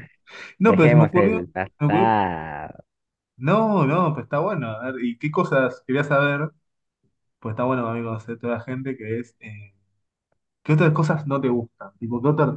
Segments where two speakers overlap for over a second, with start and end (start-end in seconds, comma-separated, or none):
0.7-2.2